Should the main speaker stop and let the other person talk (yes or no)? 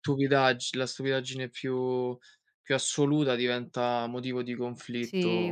yes